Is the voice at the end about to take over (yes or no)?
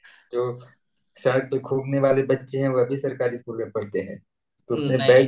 no